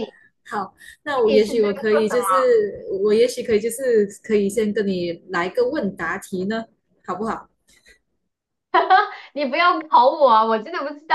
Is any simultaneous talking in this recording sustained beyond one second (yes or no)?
yes